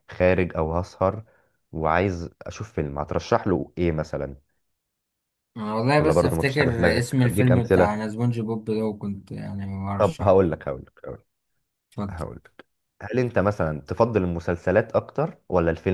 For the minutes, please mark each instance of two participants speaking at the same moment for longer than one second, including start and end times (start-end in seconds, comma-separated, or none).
6.0-7.9